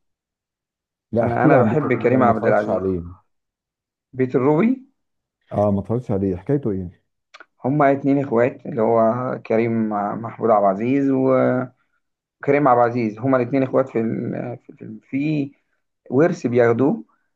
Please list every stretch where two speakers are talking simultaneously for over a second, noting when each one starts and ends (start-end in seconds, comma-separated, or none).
1.2-2.8